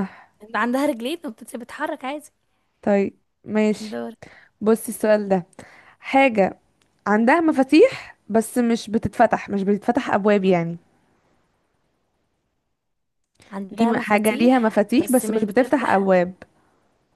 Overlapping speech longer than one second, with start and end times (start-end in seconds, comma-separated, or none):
13.8-16.1